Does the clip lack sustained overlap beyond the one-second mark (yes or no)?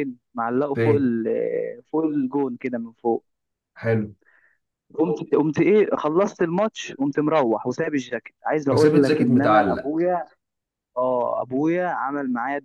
no